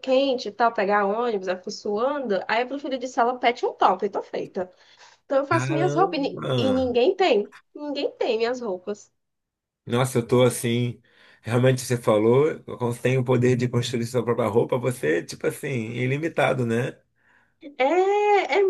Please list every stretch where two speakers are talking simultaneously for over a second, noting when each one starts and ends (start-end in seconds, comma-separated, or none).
5.5-6.8